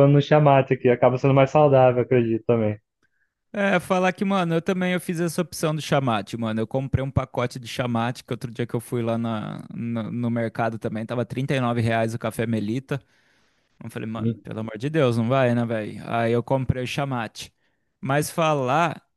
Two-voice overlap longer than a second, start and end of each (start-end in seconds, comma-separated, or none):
none